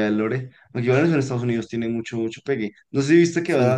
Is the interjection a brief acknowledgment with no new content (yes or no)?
yes